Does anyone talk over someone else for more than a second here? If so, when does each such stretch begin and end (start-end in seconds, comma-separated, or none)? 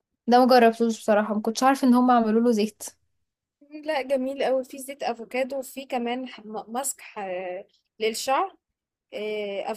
none